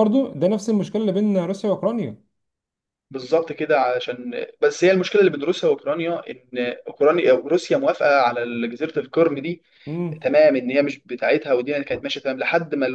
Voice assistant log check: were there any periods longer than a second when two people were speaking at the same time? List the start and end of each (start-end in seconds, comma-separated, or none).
none